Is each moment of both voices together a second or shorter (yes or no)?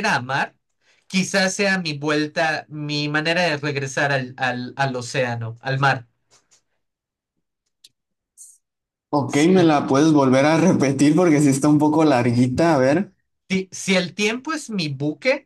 yes